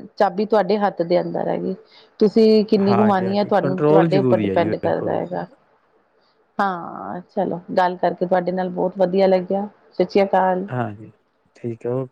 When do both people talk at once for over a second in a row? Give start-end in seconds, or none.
2.9-5.1